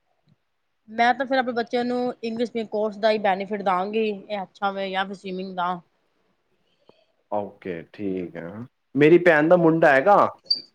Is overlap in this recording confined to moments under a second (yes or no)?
yes